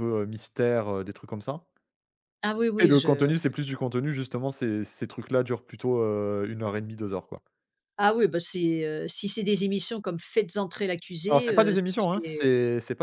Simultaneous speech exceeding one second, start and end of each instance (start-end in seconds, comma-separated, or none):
11.3-12.5